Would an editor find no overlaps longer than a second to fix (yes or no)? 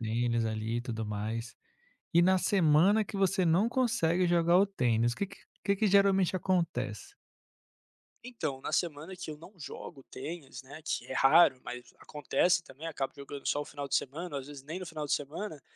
yes